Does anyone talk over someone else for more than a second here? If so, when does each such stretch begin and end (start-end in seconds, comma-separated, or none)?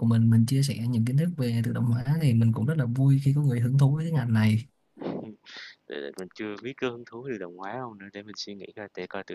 none